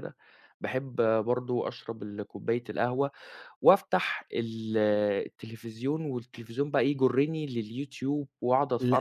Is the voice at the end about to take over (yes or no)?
yes